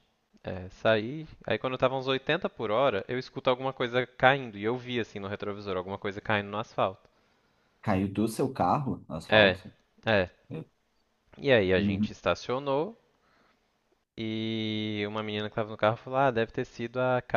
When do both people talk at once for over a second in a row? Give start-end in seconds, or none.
none